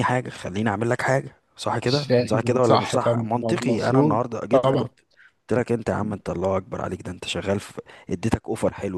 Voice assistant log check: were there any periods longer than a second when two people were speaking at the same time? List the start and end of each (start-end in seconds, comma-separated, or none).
1.9-4.9